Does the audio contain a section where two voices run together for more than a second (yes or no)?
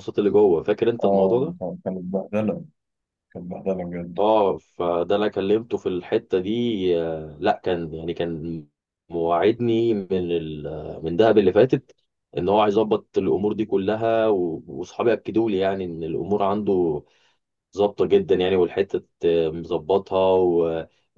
no